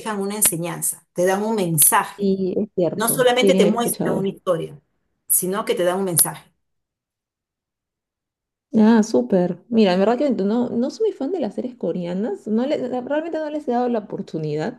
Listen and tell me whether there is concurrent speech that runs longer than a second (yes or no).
yes